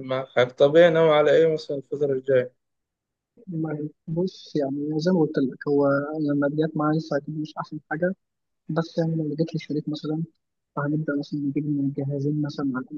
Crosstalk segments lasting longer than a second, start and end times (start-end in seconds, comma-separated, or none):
none